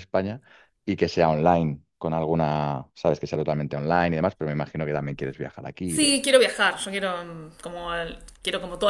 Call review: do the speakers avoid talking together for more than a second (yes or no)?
yes